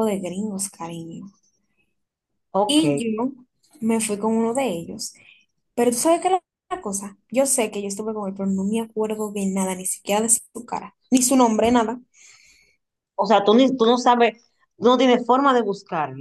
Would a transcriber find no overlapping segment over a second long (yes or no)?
yes